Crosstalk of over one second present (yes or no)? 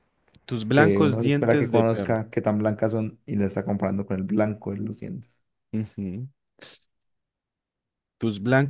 yes